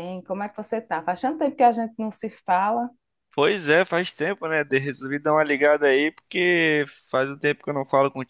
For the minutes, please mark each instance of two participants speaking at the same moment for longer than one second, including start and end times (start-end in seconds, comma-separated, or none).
none